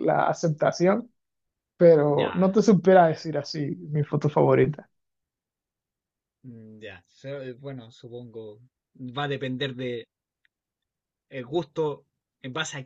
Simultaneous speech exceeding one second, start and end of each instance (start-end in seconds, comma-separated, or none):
none